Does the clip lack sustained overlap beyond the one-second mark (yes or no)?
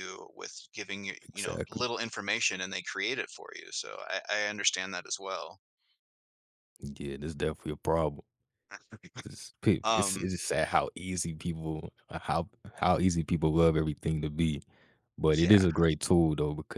yes